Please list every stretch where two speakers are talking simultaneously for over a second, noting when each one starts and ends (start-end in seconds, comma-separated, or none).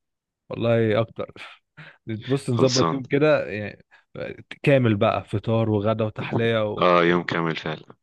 none